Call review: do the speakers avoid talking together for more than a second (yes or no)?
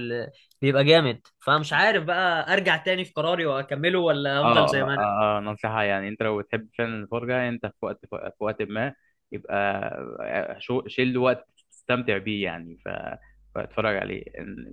yes